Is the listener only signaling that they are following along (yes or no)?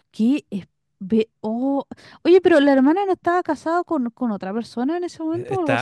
no